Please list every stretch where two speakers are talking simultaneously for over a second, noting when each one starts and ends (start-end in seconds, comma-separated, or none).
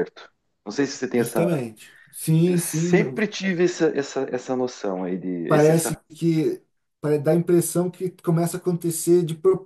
none